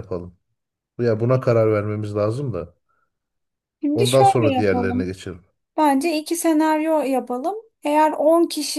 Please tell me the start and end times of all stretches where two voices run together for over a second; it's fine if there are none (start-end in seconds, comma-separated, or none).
3.9-5.2